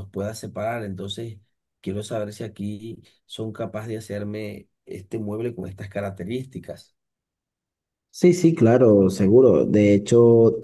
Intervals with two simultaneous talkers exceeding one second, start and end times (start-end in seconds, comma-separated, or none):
none